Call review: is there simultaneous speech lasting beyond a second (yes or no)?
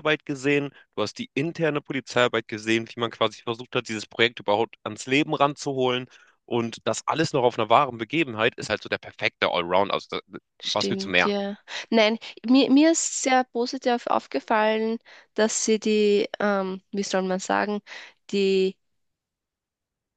no